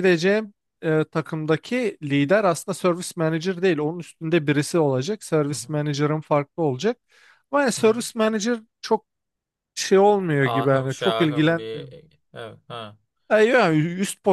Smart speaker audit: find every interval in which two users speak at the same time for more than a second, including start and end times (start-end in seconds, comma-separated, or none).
10.4-11.9